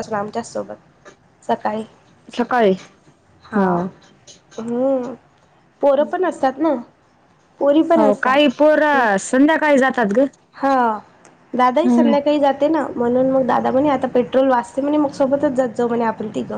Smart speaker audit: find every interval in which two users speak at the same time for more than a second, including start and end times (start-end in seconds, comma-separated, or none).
none